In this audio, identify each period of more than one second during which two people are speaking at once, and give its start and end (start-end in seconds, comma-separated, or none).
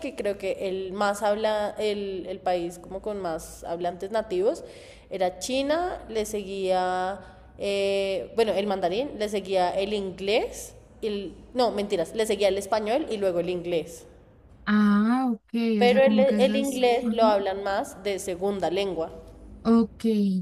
15.8-17.4